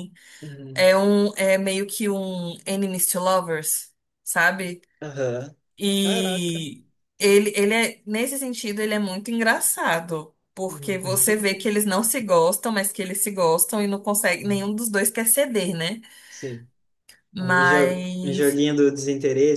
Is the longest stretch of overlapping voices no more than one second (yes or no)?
no